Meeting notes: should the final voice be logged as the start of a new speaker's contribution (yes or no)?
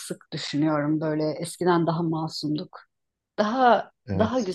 no